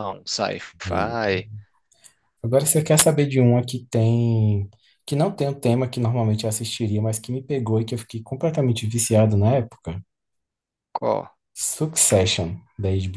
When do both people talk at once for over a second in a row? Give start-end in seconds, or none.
none